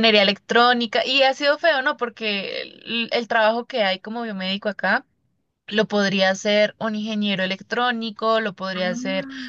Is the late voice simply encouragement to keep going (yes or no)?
yes